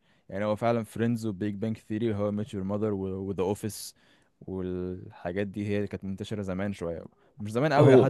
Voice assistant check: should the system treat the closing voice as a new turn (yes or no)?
no